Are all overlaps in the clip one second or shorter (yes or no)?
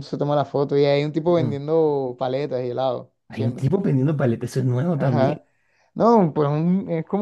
yes